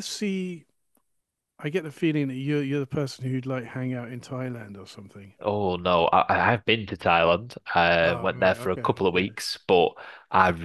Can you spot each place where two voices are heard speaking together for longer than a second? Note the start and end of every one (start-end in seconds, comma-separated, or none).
8.0-9.4